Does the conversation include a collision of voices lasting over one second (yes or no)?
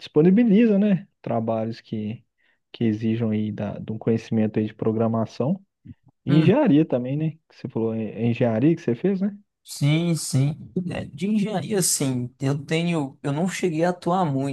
no